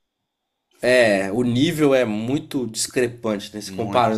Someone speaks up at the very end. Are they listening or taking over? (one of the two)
listening